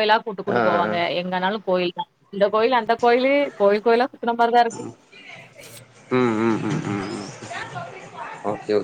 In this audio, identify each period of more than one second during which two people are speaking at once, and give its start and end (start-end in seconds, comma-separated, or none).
none